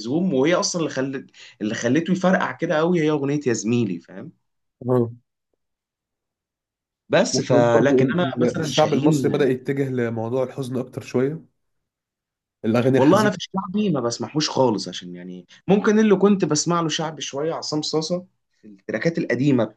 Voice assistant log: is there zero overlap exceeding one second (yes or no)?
no